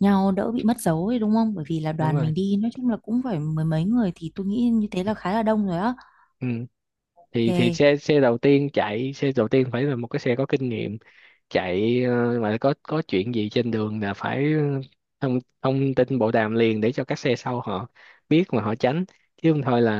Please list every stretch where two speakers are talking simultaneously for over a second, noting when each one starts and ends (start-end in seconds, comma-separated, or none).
none